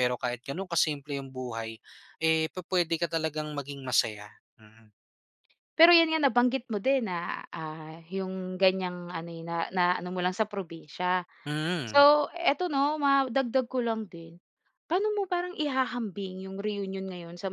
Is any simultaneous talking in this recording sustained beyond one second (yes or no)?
no